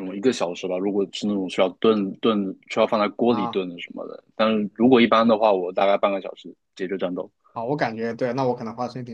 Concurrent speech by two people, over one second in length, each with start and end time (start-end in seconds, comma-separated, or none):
none